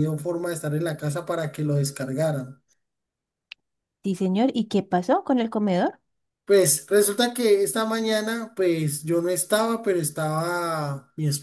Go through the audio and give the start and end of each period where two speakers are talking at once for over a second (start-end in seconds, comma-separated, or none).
none